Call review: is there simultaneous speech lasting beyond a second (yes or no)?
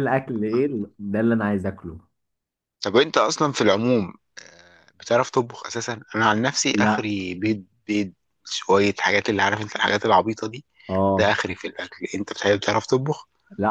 no